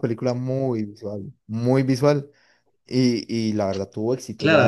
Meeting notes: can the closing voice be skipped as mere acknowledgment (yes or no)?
no